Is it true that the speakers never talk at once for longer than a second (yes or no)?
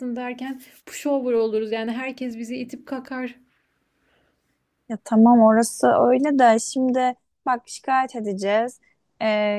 yes